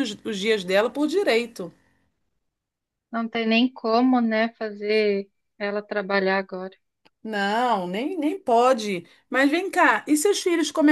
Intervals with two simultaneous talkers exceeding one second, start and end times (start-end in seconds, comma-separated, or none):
none